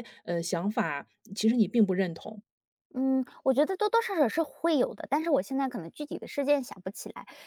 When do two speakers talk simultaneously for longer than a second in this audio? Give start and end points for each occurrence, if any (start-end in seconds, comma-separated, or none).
none